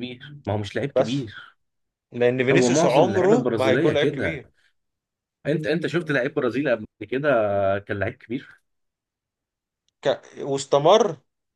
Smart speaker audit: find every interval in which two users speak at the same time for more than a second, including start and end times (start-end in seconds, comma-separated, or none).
2.5-4.4